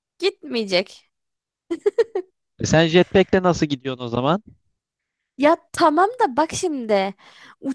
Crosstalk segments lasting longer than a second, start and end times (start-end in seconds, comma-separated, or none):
none